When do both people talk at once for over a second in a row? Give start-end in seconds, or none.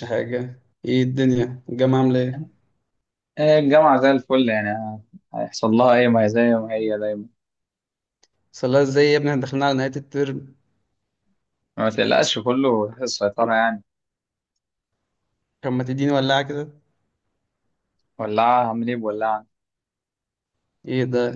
none